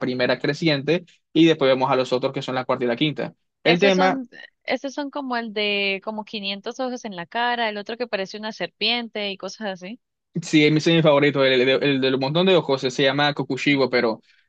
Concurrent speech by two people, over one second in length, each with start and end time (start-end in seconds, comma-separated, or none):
none